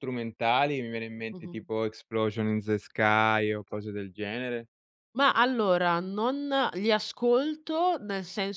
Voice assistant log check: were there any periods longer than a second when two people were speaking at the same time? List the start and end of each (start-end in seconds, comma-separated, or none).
none